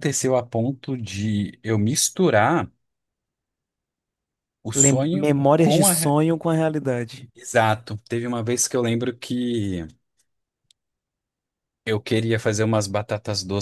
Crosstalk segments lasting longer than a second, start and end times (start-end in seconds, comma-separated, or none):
4.7-6.1